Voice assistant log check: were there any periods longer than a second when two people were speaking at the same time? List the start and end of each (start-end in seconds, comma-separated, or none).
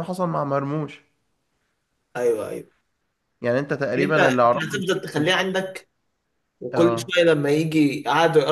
4.0-5.5